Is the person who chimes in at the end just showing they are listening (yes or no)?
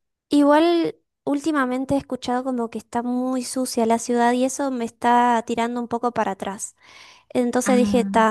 yes